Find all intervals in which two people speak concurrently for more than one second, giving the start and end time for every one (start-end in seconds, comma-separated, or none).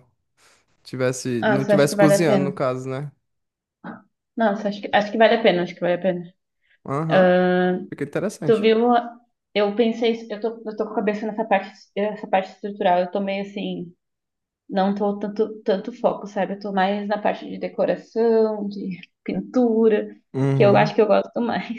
1.4-2.6